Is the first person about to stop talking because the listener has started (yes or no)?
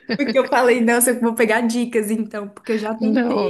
yes